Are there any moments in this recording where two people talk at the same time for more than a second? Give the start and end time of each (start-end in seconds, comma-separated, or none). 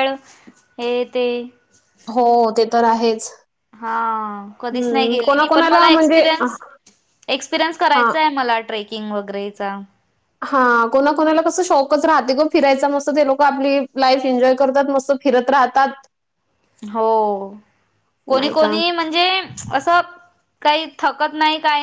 4.7-6.2